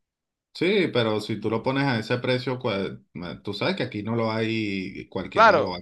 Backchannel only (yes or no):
no